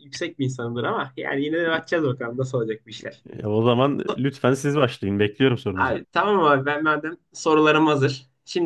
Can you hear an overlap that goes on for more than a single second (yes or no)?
no